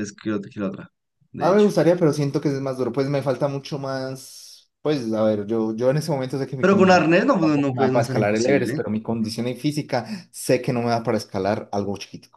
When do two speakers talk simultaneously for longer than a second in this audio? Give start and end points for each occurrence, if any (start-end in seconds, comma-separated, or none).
6.6-8.8